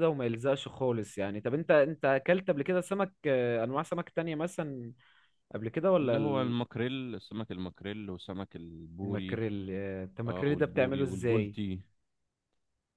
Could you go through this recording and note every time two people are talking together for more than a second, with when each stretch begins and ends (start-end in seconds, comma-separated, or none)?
10.3-11.6